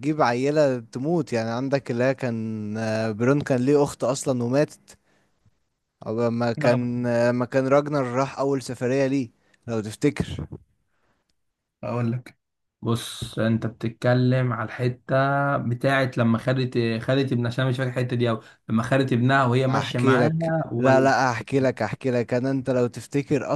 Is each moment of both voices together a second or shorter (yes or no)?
no